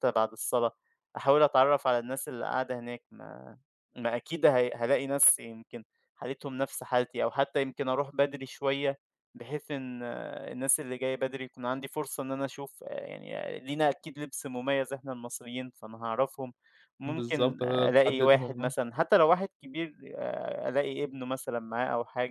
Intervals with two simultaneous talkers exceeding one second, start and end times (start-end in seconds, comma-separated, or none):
17.1-18.7